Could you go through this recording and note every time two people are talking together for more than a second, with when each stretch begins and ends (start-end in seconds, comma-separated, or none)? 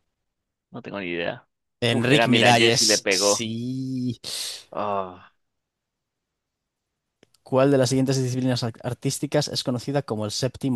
1.9-3.5